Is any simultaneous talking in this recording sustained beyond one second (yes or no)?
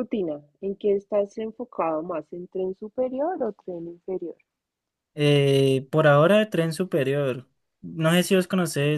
no